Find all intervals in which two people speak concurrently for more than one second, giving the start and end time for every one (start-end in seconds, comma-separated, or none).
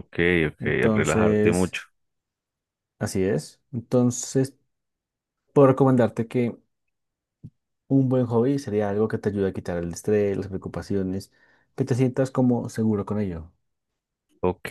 0.6-1.8